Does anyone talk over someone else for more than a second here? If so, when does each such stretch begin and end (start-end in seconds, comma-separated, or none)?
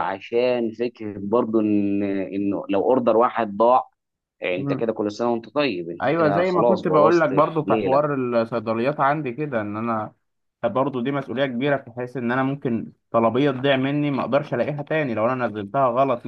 6.0-8.0